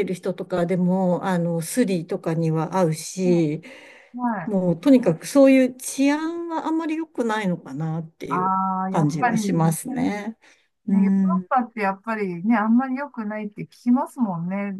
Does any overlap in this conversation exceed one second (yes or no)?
yes